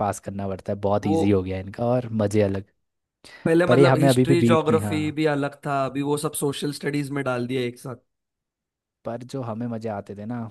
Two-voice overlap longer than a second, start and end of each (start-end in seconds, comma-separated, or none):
3.7-5.2